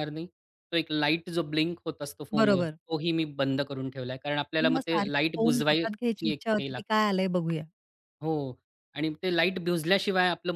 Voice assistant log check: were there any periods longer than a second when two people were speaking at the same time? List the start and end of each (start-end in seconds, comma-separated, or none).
4.7-6.9